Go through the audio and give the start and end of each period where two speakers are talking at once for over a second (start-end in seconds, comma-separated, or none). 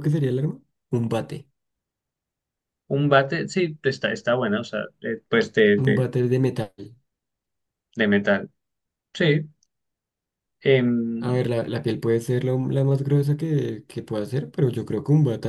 none